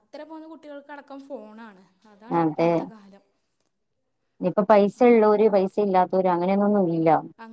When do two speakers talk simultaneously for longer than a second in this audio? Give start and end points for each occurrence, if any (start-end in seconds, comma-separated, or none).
none